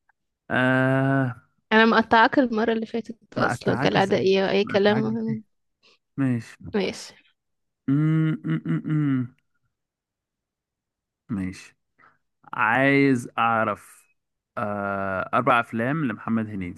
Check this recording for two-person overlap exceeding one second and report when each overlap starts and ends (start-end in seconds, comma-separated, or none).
3.4-5.0